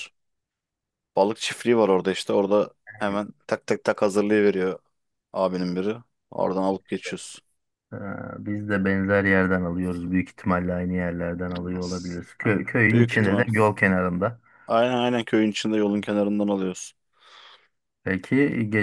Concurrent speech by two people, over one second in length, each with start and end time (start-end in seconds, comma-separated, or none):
none